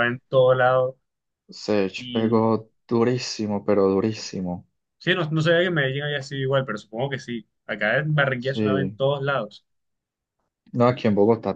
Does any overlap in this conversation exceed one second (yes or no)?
no